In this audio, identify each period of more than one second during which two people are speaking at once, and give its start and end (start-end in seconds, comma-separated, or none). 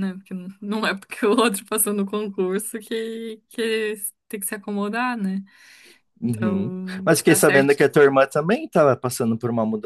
6.3-7.8